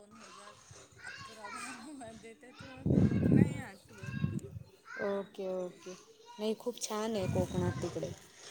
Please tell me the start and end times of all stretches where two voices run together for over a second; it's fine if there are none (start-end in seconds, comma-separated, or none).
none